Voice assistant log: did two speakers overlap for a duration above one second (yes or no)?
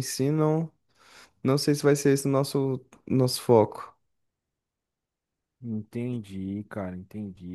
no